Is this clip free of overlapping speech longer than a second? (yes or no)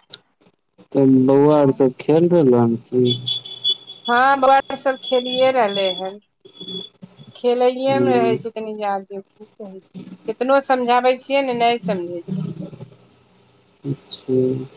yes